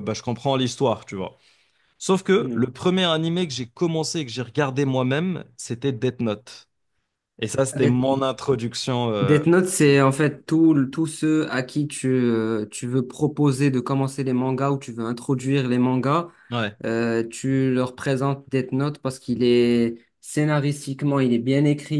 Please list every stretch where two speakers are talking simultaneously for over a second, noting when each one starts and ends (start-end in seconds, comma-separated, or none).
none